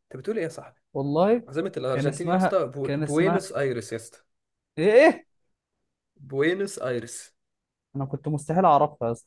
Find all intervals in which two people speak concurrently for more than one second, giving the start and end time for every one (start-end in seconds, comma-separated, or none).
1.9-3.5